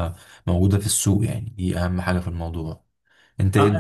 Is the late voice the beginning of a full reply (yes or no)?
yes